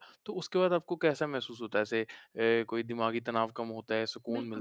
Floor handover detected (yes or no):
yes